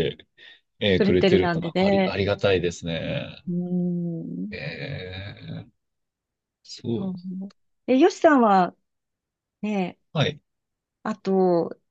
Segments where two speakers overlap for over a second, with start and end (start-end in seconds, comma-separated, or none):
0.9-2.1